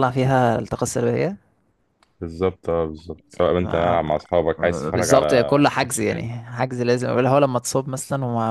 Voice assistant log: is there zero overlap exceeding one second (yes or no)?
no